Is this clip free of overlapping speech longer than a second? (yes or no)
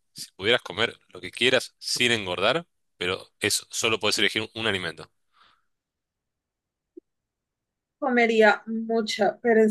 yes